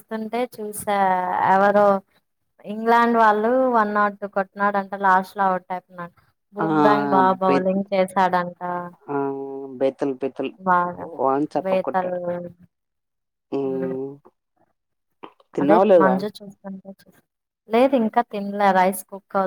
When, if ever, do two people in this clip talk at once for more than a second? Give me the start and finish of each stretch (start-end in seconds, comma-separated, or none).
none